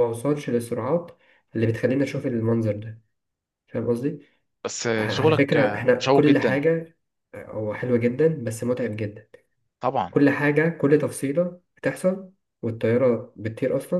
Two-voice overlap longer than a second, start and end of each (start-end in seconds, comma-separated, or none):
5.0-6.6